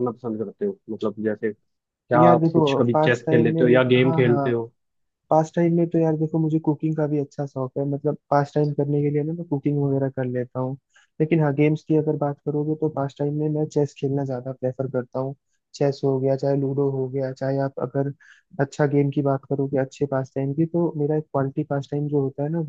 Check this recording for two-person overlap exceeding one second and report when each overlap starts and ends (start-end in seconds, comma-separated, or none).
2.1-4.5